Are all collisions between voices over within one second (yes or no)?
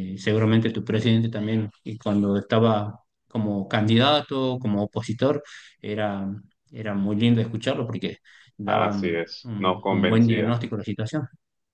no